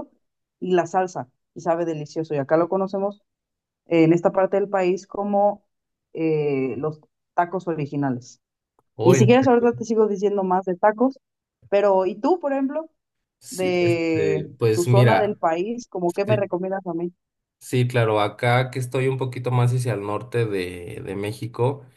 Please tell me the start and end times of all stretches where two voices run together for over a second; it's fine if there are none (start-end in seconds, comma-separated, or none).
13.5-15.4